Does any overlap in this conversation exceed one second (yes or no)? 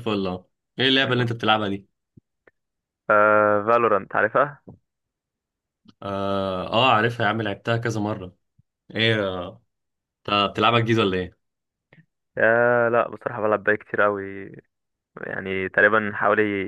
no